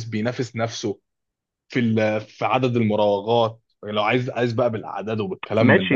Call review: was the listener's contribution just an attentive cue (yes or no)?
no